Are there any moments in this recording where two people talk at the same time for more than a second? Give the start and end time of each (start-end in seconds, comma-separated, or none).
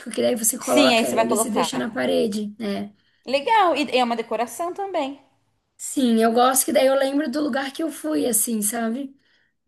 0.6-2.0